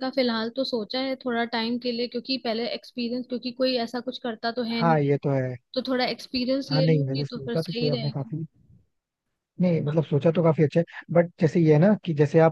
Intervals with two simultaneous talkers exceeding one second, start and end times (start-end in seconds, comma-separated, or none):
6.7-8.3